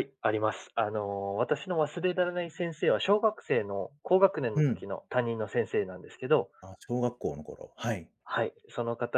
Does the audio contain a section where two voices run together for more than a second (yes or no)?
no